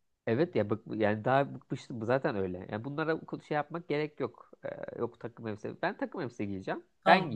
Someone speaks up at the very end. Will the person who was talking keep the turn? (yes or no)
no